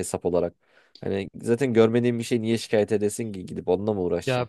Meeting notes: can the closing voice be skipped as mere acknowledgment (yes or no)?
no